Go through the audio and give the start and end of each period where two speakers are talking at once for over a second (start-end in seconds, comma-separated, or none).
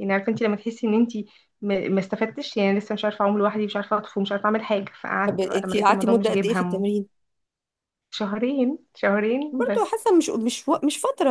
5.3-7.0